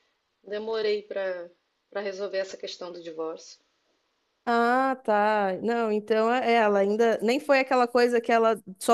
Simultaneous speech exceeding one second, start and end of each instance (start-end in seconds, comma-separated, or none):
none